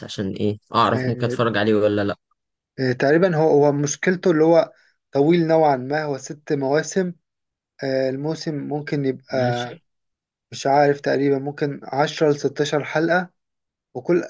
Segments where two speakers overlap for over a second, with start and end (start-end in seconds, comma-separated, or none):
none